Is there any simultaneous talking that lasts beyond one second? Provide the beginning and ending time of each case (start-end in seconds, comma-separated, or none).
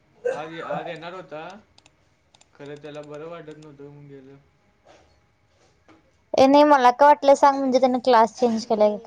none